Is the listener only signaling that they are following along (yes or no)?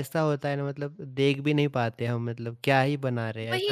no